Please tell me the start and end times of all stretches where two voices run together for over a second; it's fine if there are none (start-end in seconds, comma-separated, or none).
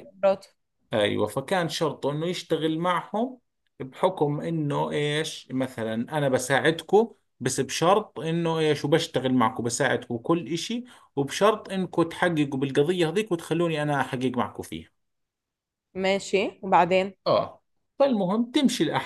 none